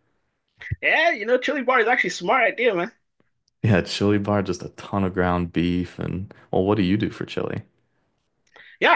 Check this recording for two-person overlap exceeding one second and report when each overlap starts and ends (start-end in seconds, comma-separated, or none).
none